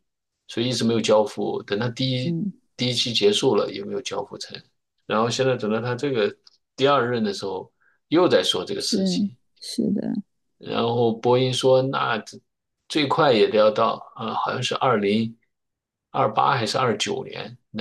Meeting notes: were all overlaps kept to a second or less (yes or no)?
yes